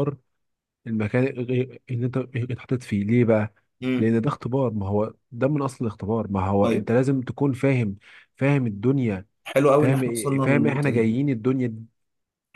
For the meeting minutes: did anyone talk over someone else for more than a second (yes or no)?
yes